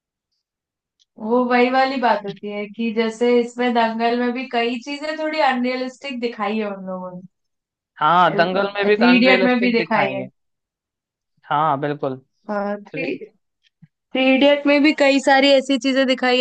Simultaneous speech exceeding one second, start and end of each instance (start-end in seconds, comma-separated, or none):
8.3-10.2